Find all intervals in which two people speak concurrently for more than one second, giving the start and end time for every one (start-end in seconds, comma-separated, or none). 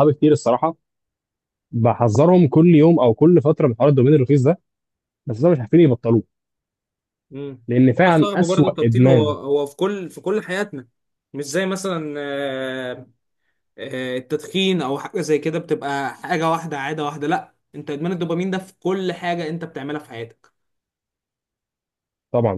8.1-9.4